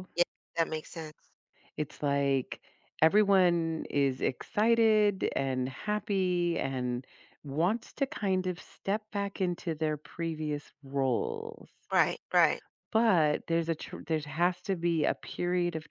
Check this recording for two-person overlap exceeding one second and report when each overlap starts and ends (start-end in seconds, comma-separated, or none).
none